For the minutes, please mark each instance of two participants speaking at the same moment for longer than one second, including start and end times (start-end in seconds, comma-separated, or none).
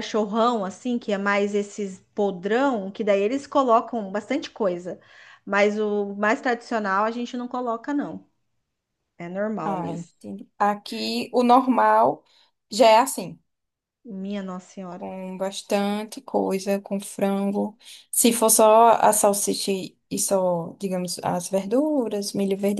none